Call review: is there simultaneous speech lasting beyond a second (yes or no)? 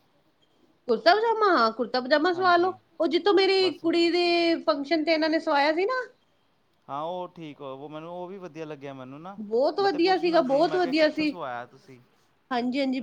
yes